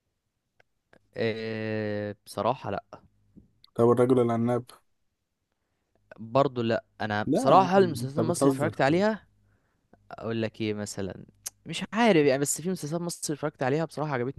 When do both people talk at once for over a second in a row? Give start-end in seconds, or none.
7.2-8.8